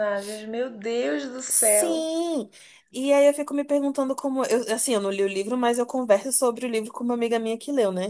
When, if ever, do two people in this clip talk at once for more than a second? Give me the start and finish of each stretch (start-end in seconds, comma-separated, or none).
none